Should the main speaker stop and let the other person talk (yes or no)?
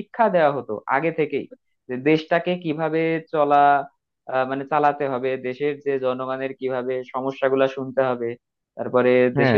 no